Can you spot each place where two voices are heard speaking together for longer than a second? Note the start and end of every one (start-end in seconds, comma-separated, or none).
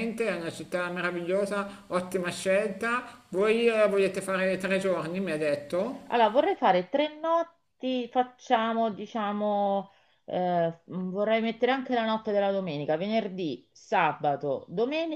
none